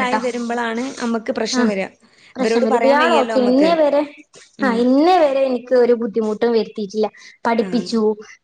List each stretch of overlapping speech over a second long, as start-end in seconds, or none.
2.4-3.7